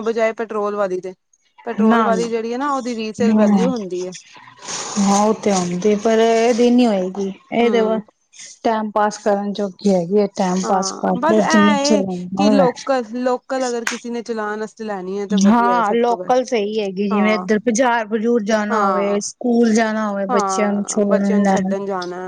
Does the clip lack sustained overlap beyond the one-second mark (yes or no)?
no